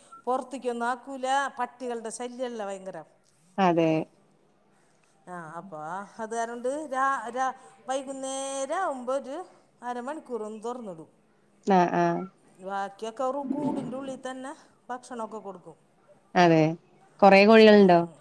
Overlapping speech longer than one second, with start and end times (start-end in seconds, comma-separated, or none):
none